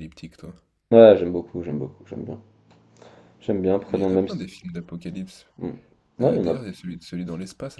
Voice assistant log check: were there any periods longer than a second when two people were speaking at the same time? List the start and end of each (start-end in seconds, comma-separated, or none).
none